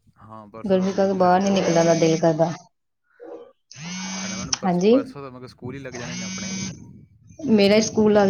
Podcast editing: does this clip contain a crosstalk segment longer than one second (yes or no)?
yes